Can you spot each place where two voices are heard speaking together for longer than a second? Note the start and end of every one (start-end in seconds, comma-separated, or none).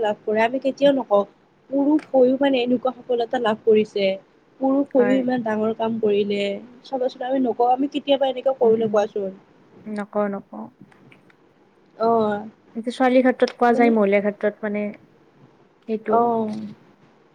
none